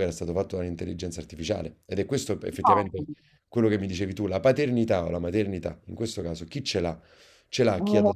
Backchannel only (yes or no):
yes